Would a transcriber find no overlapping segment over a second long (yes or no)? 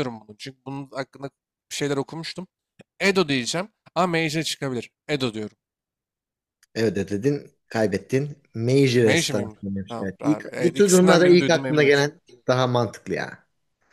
no